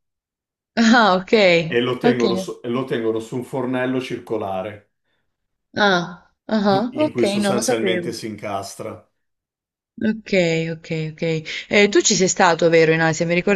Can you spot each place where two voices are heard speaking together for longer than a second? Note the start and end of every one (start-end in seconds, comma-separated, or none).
6.7-8.1